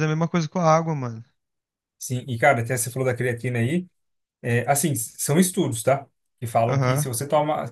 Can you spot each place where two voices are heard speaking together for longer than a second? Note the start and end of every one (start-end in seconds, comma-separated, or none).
none